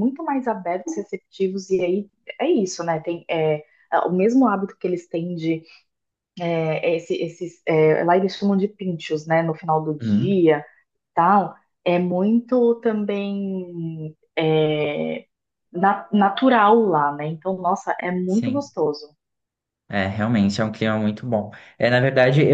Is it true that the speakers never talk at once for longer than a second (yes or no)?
yes